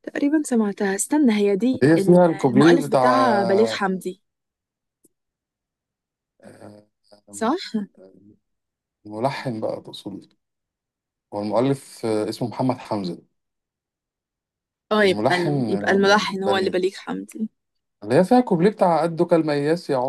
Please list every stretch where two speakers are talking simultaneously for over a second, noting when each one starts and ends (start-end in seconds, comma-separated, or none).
1.8-3.7, 15.0-16.7